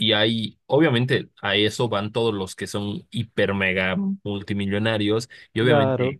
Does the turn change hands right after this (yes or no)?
no